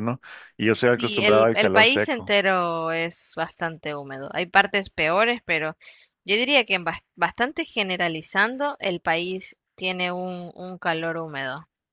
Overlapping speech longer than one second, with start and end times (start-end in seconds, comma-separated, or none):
0.9-2.4